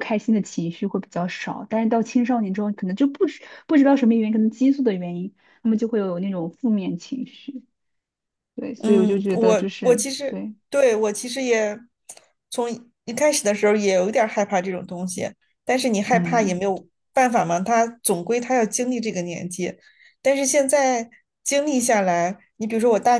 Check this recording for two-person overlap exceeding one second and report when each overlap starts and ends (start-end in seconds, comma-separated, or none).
8.8-10.5